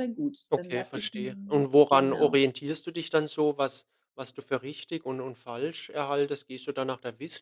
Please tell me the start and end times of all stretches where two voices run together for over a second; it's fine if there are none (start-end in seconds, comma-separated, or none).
0.5-2.4